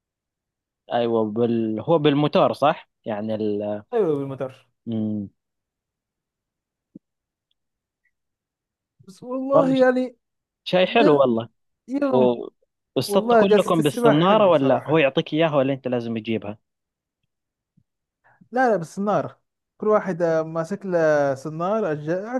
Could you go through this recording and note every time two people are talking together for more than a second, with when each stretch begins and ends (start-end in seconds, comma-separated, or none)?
13.1-15.1